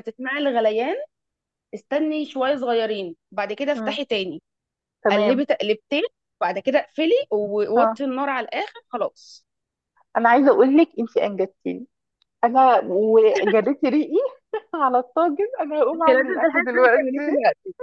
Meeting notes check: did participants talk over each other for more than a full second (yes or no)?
yes